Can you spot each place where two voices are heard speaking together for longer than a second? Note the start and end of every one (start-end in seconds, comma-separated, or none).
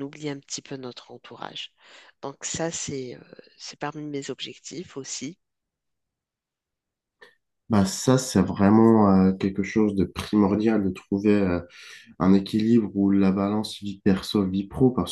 none